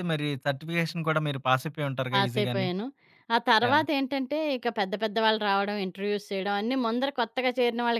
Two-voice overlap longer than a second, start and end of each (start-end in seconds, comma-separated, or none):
none